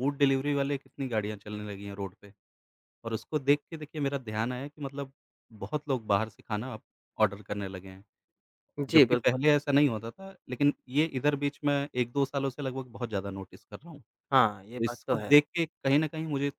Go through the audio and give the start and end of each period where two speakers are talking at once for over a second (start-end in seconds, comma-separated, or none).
none